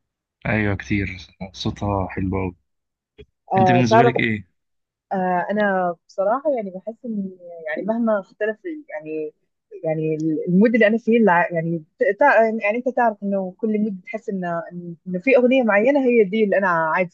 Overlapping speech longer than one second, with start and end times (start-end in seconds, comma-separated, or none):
none